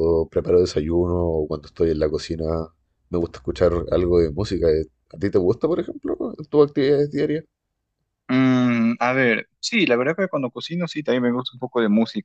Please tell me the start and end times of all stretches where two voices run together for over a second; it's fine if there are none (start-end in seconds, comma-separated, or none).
none